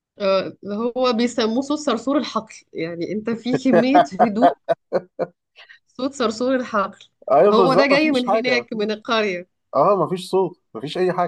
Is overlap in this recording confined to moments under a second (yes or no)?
no